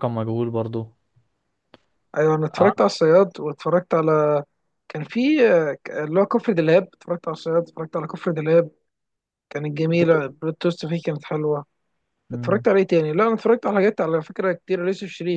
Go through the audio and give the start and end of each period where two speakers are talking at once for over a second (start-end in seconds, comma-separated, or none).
none